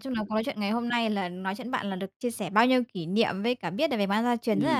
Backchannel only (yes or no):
yes